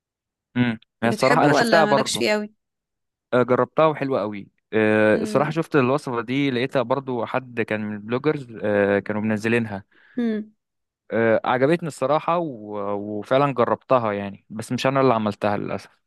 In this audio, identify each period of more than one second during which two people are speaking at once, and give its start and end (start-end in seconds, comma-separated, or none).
1.0-2.3